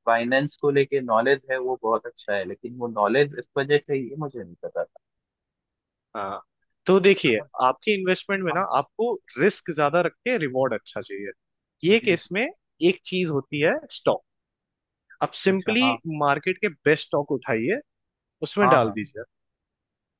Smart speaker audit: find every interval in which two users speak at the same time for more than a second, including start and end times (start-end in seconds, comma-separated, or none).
none